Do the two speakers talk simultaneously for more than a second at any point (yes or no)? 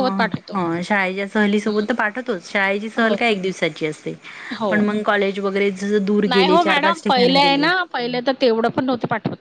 yes